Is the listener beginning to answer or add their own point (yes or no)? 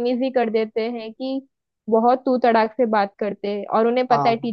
no